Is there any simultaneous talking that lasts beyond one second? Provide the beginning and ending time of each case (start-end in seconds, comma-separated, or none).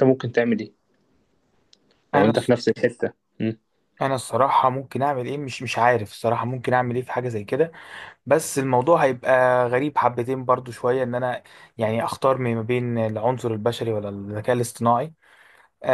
none